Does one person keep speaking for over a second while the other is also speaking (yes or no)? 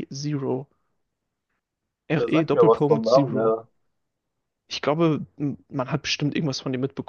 yes